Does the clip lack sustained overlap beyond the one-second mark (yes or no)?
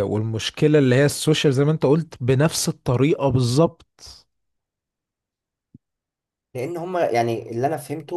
yes